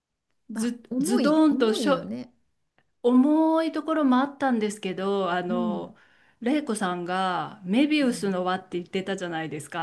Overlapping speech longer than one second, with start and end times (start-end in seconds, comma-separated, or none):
0.5-2.1